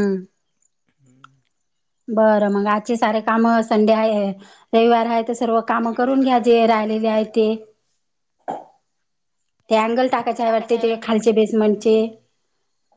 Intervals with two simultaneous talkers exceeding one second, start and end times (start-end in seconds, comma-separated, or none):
5.8-7.5